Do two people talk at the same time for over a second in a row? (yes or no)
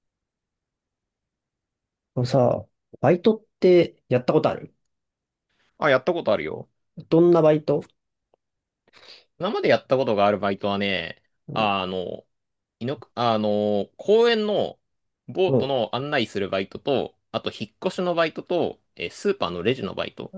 no